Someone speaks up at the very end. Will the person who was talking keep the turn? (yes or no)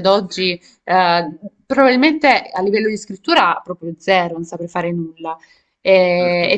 yes